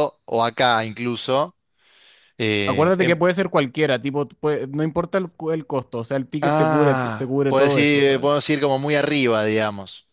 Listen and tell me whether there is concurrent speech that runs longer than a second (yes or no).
yes